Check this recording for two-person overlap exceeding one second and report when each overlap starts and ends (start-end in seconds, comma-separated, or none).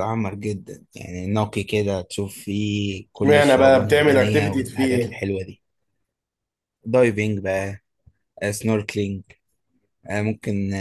3.2-5.2